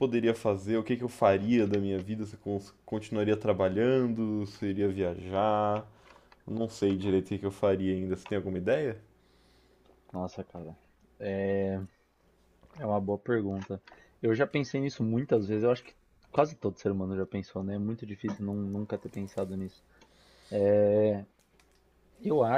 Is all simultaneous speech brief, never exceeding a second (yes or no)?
yes